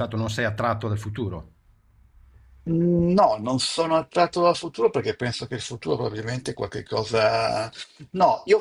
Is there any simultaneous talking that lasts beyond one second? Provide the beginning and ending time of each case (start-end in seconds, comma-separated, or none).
none